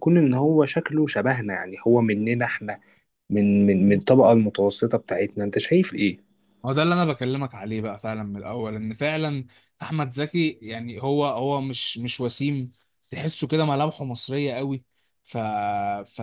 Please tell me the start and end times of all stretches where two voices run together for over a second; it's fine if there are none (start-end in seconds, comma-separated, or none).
none